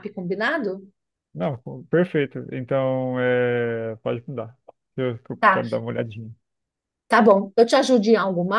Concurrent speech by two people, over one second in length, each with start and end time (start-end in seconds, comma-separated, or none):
none